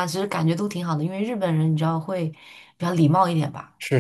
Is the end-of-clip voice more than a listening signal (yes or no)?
yes